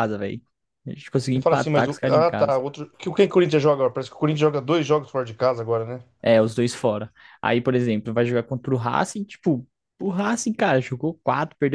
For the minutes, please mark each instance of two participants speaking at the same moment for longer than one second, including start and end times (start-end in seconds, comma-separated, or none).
1.3-2.6